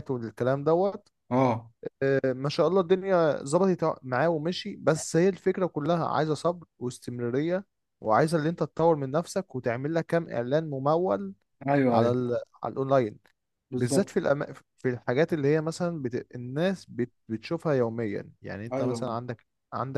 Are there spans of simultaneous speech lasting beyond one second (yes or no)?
no